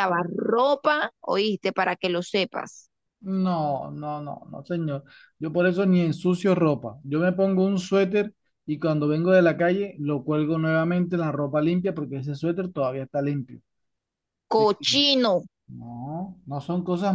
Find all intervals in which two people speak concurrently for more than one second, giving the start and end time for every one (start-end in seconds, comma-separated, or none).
none